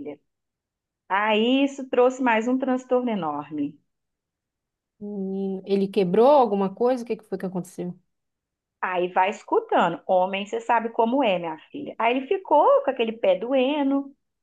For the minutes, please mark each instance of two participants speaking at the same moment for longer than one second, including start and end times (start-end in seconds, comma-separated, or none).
none